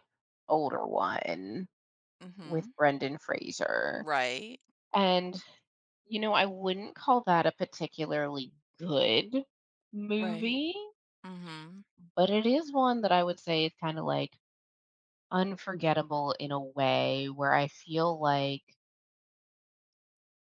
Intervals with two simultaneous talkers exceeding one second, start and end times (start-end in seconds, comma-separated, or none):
none